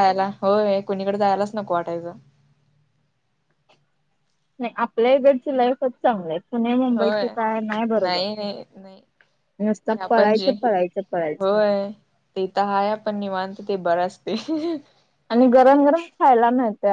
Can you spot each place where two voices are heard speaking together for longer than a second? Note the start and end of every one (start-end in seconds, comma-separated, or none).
none